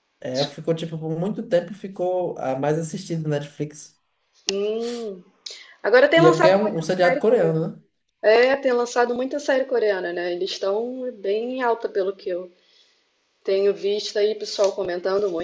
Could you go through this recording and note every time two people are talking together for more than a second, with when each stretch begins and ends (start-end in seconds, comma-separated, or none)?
6.2-7.6